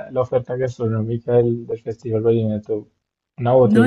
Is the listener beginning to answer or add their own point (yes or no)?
no